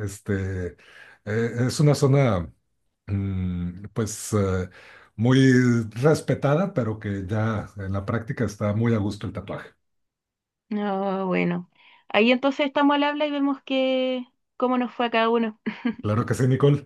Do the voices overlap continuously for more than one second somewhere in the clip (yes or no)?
no